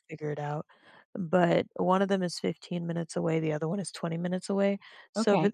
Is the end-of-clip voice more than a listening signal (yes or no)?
no